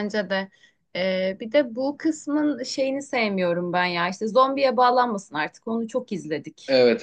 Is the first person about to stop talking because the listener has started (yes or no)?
yes